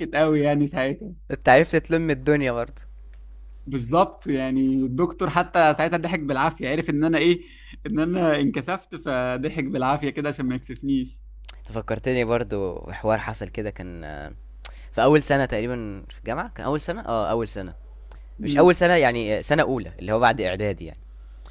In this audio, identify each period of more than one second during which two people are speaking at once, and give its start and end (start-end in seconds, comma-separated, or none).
none